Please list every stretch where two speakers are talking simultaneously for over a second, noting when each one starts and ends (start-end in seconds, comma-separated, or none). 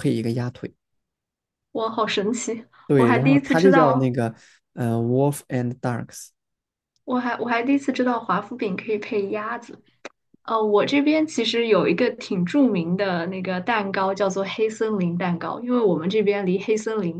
2.9-4.1